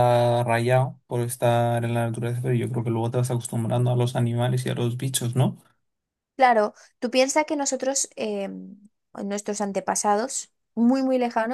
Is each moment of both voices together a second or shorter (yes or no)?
yes